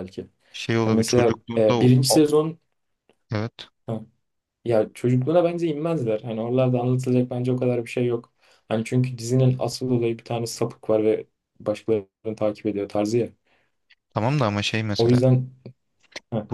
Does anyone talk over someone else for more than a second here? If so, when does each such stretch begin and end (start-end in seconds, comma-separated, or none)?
0.8-2.3